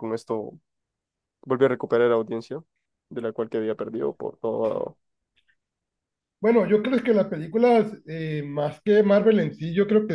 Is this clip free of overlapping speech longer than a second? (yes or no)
yes